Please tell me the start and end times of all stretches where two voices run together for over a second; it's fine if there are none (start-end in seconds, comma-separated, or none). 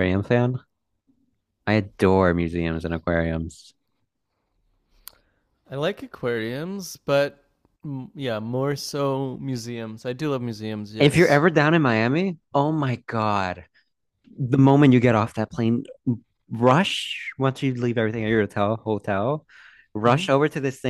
none